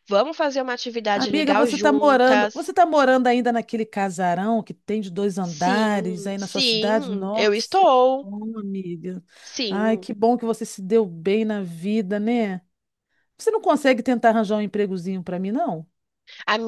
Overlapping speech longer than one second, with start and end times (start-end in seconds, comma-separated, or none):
1.1-2.7, 5.4-8.3